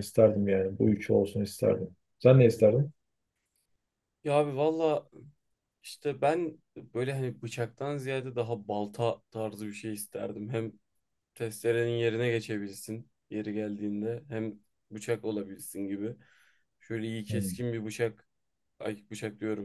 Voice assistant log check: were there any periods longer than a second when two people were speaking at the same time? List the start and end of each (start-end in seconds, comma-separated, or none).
none